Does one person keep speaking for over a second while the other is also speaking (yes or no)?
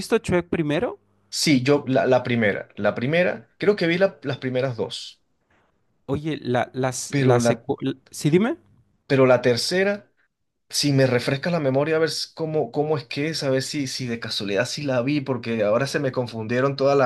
no